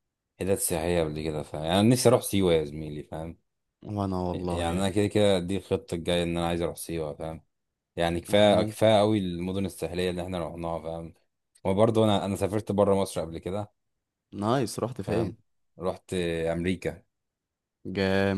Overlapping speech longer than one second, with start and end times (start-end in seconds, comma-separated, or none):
none